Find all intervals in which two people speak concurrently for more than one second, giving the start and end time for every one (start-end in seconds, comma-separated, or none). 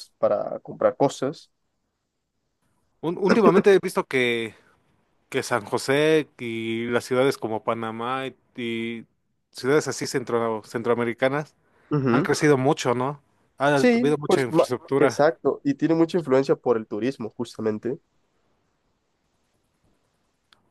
13.7-15.2